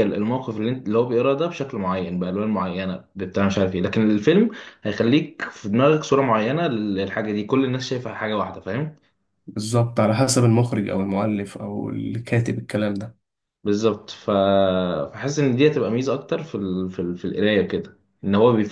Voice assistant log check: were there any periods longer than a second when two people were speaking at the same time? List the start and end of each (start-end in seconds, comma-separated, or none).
none